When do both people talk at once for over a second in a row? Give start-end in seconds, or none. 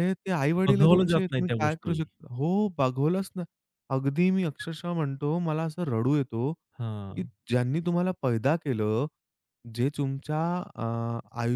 0.7-2.0